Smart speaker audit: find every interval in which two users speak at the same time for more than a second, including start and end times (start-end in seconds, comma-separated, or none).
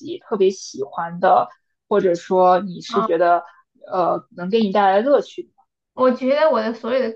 none